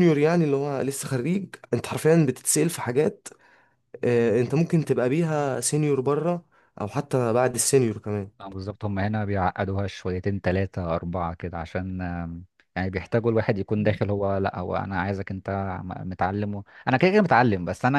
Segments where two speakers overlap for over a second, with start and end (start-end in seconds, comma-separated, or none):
none